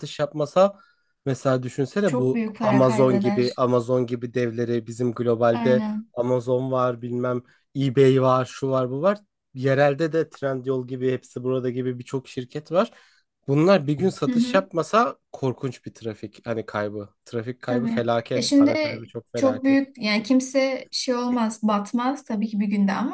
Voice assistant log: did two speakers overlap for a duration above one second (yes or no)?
yes